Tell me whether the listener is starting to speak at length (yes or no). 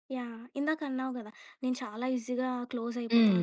no